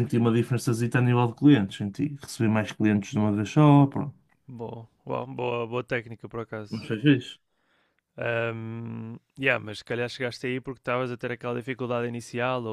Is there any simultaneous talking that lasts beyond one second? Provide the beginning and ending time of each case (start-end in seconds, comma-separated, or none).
none